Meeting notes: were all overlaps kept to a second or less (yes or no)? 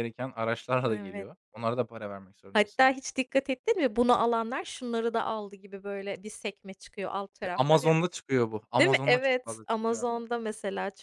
no